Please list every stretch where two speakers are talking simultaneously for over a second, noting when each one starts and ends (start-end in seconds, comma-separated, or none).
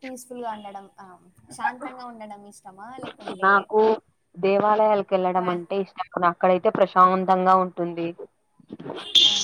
none